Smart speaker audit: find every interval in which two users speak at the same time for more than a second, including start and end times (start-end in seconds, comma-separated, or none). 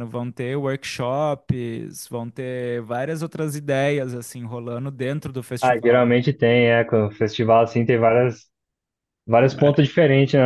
none